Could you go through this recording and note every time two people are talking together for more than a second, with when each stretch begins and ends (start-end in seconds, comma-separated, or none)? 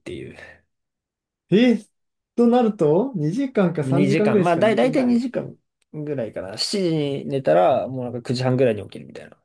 3.8-5.2